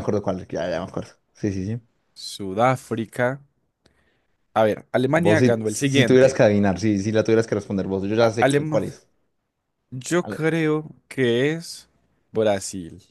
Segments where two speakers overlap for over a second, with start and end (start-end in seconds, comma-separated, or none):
5.1-6.4